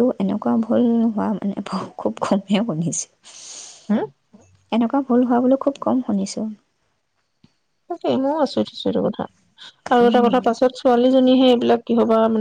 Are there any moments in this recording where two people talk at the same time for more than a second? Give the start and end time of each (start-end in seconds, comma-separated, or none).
none